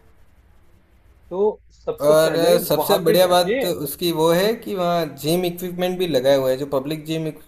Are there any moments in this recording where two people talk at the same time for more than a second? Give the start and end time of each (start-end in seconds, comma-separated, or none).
2.1-3.6